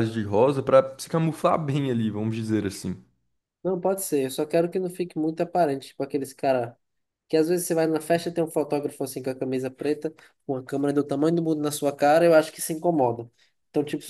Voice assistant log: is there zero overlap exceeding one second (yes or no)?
yes